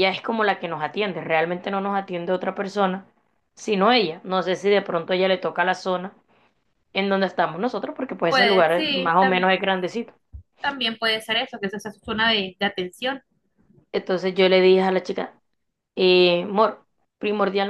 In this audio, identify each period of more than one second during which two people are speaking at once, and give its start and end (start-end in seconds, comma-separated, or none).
8.3-9.5